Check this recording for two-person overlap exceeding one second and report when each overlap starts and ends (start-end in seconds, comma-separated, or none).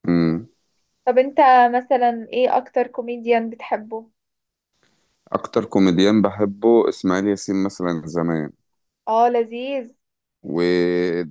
none